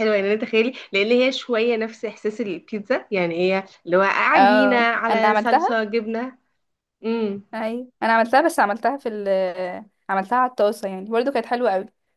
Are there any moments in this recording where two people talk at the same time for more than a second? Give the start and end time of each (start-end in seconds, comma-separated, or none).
4.3-5.8